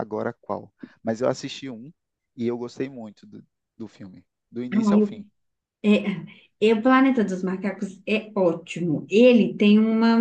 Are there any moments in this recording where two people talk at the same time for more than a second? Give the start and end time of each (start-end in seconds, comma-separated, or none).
none